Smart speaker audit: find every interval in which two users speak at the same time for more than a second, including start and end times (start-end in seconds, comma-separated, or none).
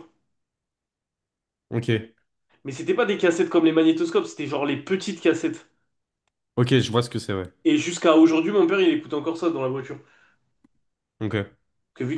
none